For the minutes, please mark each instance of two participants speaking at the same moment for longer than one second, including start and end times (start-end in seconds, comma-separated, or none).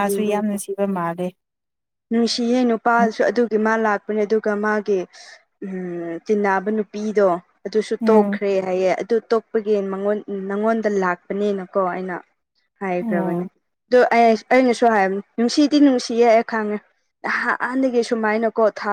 none